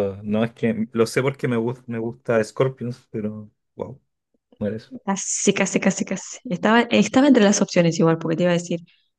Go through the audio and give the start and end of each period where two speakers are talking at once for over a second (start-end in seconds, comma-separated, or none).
none